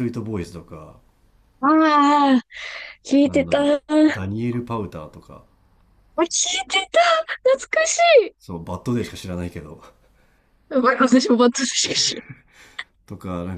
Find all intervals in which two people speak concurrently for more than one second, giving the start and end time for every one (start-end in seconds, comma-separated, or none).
none